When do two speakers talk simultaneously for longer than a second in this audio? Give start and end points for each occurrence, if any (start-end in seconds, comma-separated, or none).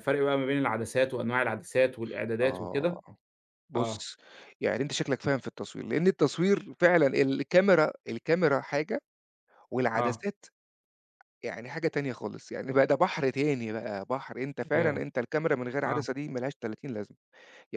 none